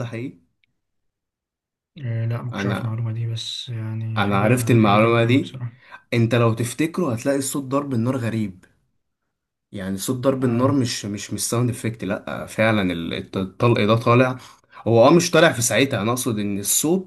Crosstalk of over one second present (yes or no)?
yes